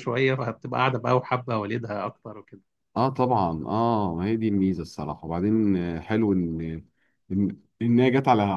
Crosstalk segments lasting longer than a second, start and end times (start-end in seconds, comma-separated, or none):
none